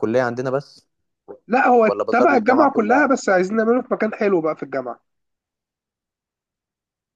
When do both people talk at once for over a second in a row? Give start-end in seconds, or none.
1.8-3.1